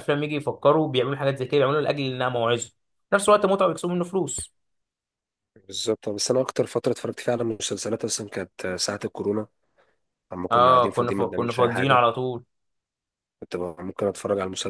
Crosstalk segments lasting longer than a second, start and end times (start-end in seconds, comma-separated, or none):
10.5-12.0